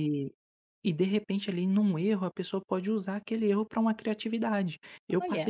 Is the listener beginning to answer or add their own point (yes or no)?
no